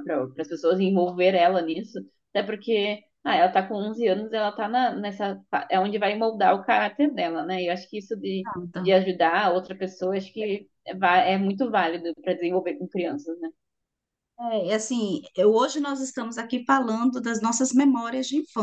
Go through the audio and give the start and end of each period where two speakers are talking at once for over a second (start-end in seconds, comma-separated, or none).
none